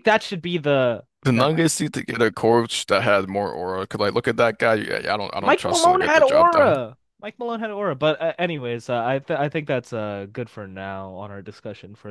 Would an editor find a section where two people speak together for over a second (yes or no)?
yes